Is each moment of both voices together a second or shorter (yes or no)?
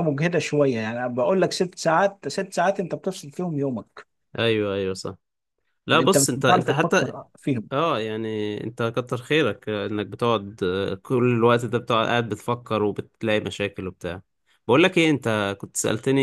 no